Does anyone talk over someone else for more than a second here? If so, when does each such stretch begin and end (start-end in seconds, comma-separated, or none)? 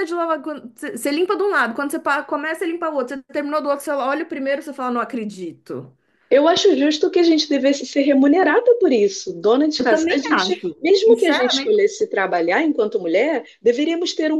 9.8-11.8